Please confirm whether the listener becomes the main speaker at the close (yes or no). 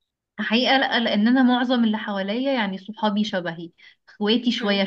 no